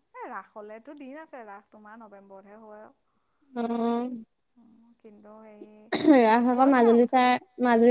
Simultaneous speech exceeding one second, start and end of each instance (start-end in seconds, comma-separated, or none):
none